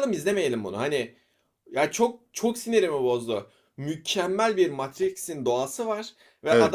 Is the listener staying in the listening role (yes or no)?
yes